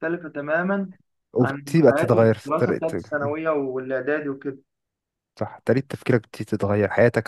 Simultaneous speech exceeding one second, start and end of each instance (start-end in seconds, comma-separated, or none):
1.4-3.1